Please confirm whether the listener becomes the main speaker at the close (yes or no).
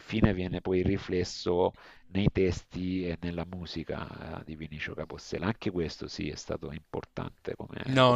yes